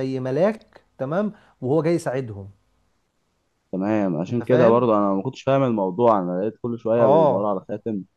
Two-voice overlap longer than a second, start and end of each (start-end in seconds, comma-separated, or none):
none